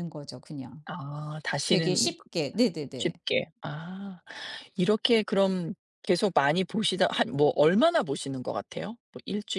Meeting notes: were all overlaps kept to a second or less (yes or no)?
yes